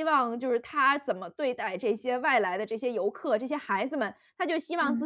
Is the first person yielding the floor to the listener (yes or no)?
no